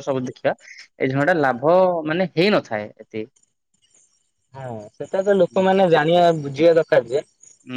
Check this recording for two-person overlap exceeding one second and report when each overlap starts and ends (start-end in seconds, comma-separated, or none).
none